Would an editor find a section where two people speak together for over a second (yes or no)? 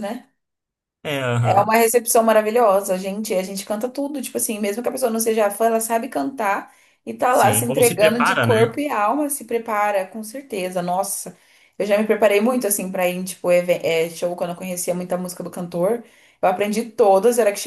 yes